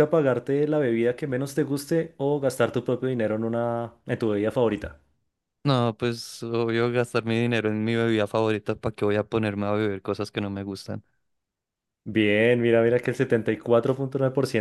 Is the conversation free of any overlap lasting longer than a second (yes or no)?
yes